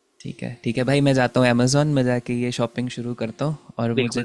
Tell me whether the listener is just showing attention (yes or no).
yes